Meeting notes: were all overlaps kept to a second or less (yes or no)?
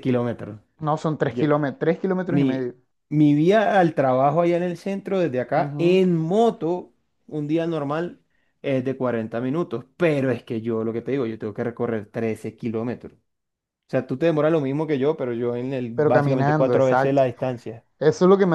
no